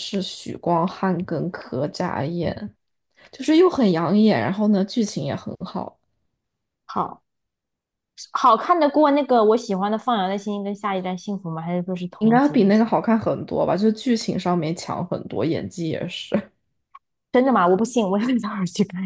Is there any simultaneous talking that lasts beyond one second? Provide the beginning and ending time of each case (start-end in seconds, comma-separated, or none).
none